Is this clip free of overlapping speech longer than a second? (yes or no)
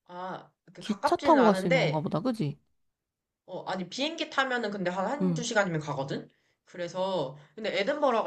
no